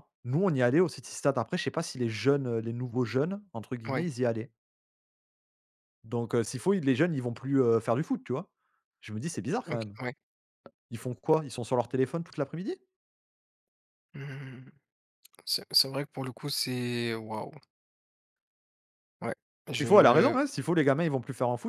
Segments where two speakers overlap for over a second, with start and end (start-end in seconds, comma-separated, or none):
none